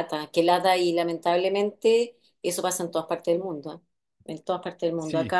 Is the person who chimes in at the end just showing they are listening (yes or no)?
yes